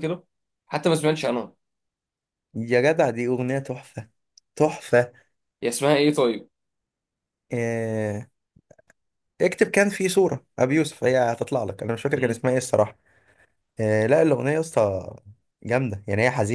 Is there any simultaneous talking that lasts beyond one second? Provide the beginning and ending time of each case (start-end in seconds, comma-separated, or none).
none